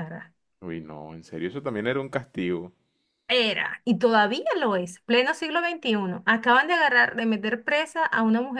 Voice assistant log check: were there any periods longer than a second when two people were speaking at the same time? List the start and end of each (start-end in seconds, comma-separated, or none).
none